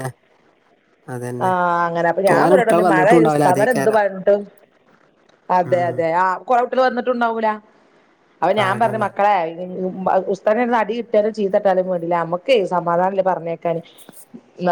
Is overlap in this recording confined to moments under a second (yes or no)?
no